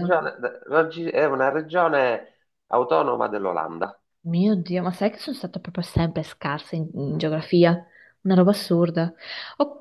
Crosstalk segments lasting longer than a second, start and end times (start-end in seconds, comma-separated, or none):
none